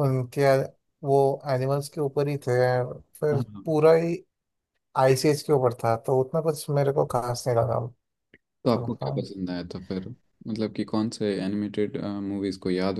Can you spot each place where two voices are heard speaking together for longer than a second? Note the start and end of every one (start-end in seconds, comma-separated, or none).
none